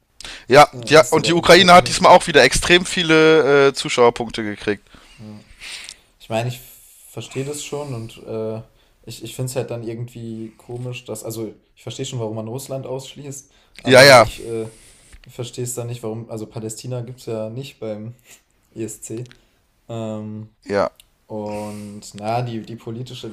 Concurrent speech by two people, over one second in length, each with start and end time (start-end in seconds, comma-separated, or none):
0.7-2.3